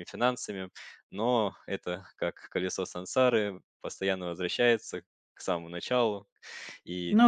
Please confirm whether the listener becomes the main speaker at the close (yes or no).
no